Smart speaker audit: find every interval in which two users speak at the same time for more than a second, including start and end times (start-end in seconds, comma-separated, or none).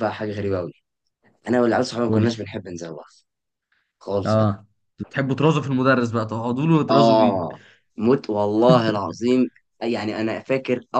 none